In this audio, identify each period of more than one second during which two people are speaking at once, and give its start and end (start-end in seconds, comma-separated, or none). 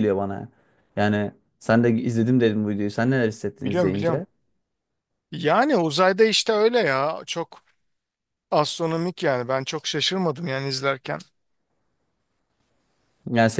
none